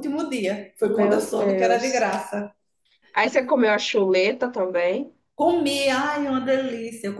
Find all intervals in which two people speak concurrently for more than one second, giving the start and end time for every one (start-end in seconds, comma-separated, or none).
0.8-2.1